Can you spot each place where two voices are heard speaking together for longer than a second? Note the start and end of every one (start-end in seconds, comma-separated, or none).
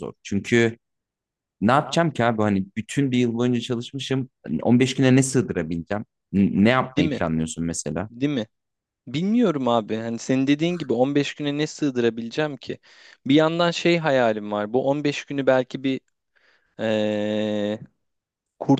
none